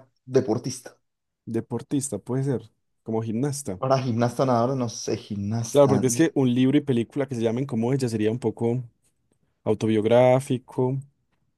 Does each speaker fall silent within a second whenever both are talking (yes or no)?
yes